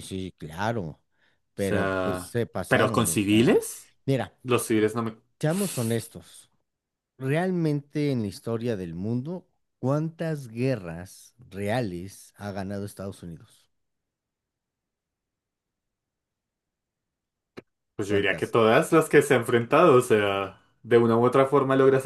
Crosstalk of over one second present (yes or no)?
yes